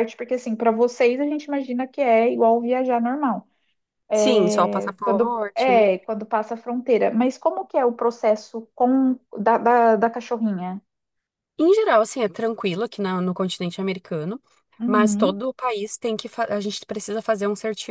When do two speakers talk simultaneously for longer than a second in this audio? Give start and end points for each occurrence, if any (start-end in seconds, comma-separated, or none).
4.1-5.8